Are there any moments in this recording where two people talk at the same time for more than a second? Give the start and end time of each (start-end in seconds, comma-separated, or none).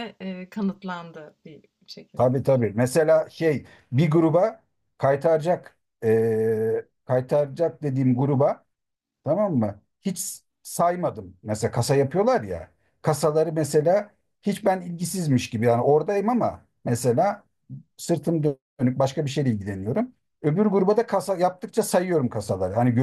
none